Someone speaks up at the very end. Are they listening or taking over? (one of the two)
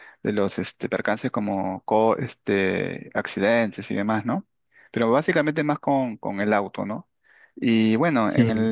listening